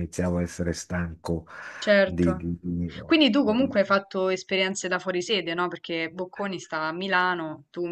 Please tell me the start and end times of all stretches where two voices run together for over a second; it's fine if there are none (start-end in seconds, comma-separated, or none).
none